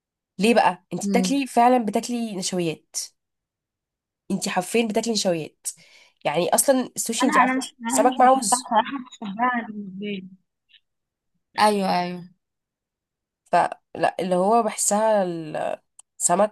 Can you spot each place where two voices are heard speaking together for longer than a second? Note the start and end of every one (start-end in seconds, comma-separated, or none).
7.2-8.6